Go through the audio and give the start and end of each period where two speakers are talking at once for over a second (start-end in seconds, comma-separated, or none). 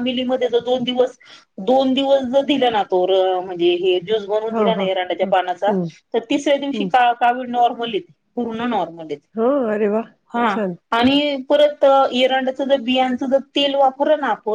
none